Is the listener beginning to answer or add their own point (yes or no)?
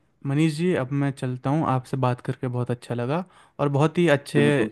no